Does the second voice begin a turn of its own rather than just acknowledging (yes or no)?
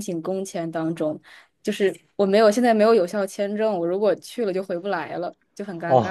yes